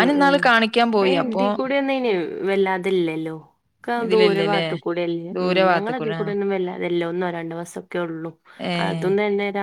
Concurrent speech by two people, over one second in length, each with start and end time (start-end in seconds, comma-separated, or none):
none